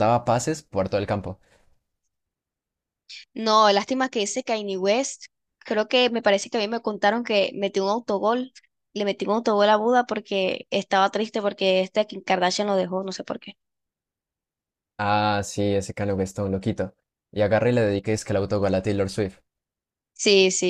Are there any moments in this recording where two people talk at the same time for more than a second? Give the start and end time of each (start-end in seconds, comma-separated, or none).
none